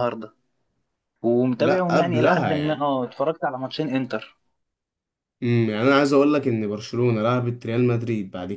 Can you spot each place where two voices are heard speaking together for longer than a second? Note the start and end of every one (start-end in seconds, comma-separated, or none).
1.6-2.9